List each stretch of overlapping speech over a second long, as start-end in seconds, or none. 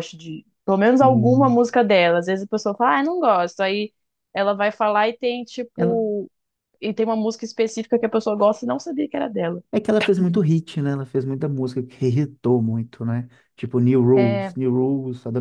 none